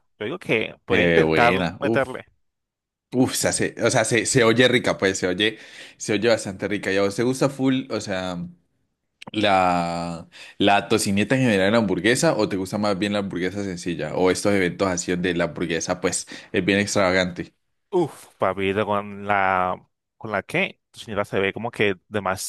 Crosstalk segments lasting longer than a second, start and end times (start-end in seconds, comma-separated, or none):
0.9-2.2